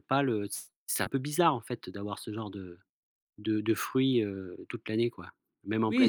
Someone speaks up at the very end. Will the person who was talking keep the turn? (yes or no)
no